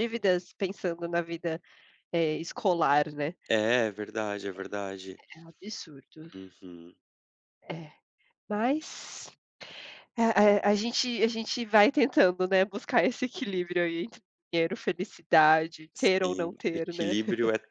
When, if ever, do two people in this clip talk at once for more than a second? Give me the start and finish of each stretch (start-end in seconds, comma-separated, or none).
15.9-17.2